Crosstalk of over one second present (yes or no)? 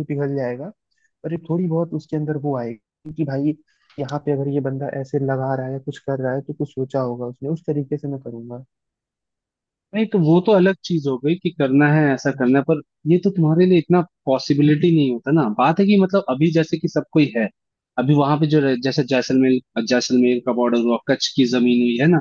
no